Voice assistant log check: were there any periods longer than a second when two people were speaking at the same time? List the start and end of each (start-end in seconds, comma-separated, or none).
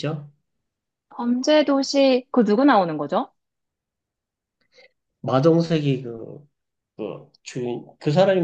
none